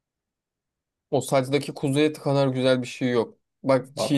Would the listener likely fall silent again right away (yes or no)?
yes